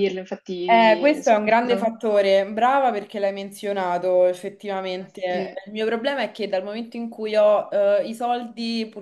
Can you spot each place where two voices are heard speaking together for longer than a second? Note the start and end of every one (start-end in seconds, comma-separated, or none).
0.7-1.9